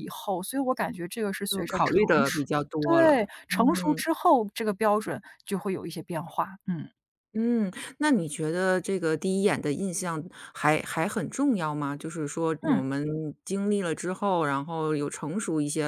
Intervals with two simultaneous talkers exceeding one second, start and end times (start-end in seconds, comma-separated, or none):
1.5-4.0